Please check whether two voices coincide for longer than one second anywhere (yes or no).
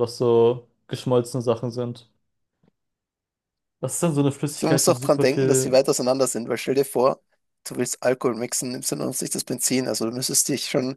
yes